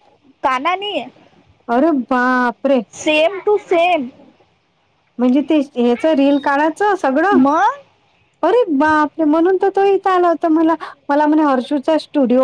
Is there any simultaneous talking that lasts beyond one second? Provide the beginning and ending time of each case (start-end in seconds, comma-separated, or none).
none